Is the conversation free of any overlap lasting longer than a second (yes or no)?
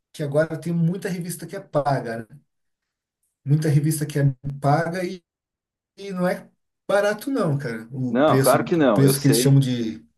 no